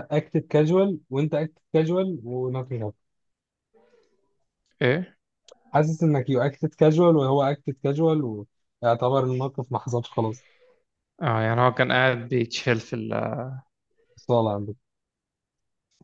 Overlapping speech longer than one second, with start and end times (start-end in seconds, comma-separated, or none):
none